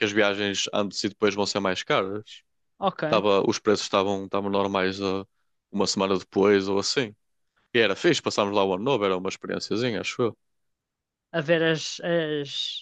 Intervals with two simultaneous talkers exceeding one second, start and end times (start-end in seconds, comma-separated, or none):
none